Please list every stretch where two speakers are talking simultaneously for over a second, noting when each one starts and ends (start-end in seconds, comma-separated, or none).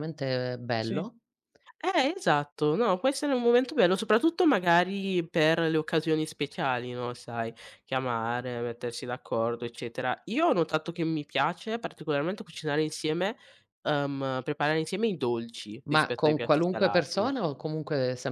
15.9-17.3